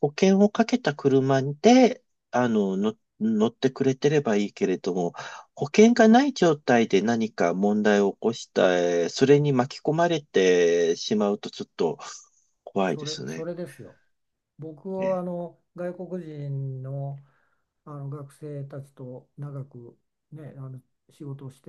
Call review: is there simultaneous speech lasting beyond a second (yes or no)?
no